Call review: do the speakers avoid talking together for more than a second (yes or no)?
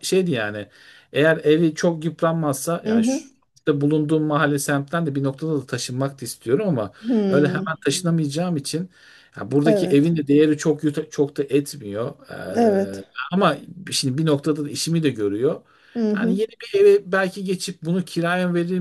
yes